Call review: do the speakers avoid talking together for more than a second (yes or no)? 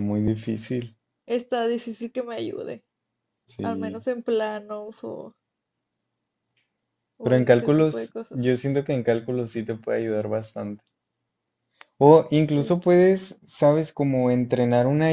no